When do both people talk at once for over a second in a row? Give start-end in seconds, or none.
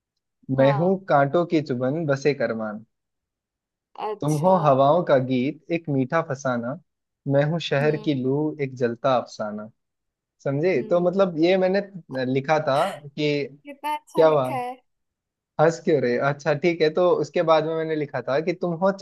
none